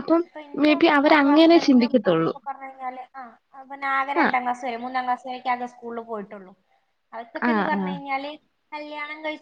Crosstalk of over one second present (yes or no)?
yes